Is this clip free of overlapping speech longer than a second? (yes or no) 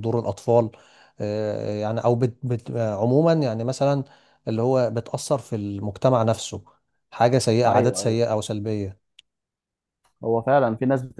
yes